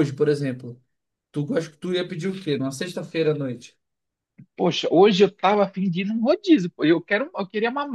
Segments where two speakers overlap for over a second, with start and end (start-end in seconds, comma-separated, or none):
none